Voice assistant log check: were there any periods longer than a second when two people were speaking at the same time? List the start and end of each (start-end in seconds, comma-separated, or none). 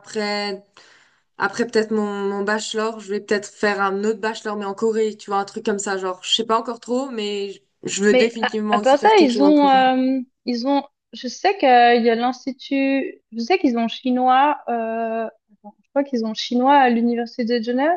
8.1-9.7